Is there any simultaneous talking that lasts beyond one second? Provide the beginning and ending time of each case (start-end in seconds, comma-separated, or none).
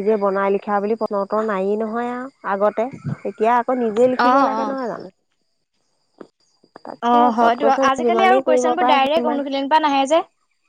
7.0-9.4